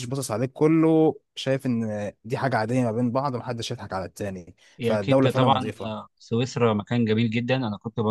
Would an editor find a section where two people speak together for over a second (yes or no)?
yes